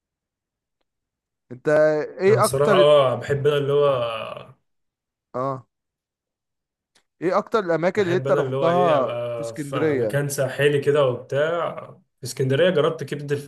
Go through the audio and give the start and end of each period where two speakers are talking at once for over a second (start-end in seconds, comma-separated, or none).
8.0-10.2